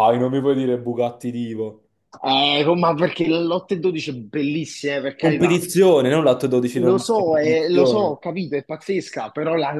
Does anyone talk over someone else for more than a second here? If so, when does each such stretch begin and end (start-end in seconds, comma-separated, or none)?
6.8-8.2